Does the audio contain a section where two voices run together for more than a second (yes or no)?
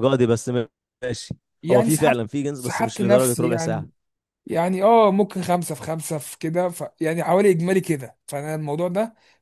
yes